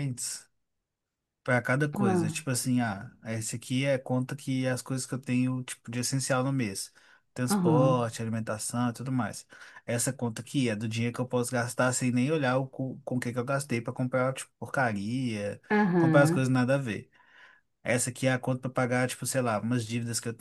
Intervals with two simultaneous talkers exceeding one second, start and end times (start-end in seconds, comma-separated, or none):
none